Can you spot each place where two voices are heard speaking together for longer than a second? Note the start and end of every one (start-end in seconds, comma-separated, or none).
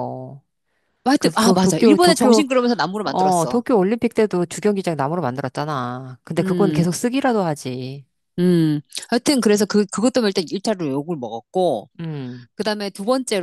1.2-2.4